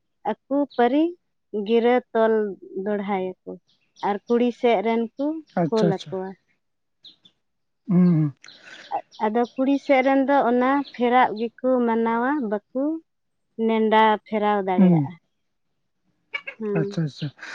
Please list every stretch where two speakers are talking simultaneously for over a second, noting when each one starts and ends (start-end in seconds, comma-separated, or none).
none